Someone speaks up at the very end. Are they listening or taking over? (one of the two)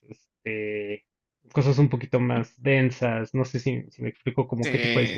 taking over